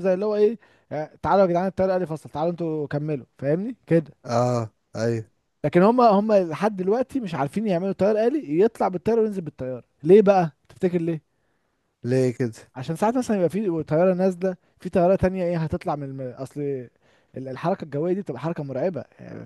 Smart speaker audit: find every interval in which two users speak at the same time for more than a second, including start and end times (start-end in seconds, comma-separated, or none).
none